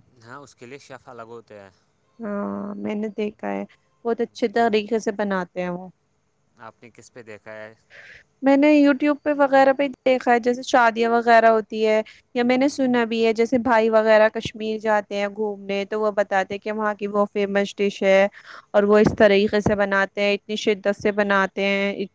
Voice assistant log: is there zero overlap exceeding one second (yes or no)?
yes